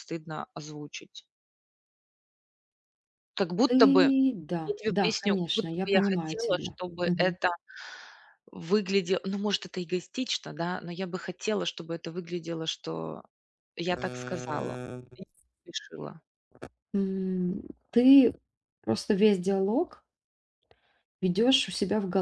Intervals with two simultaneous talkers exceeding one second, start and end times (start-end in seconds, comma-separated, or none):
4.6-7.4